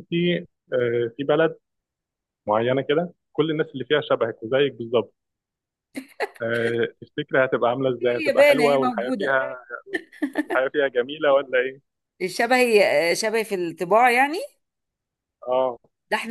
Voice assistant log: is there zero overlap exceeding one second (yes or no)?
no